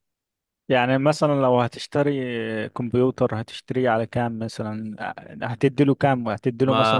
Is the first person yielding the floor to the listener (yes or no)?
yes